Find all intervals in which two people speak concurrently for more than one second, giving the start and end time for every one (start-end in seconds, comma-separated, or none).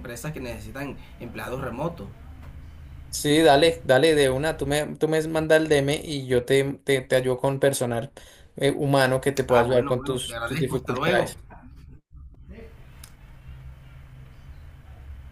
9.5-11.3